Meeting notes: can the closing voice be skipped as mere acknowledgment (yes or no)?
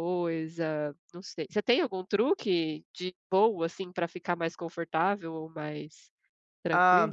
no